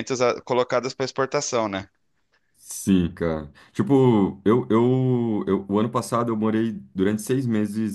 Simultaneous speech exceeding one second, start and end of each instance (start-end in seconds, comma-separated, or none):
none